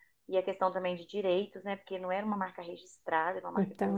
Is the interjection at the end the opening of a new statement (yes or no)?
yes